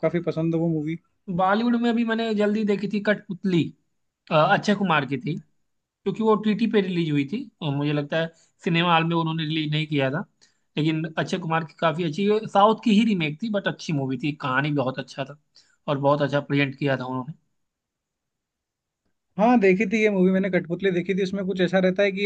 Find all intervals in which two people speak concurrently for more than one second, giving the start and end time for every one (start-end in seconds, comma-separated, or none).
none